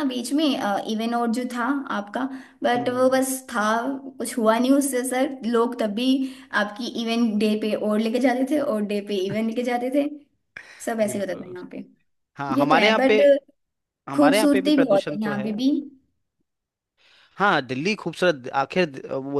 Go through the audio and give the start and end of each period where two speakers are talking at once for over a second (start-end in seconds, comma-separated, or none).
14.2-15.5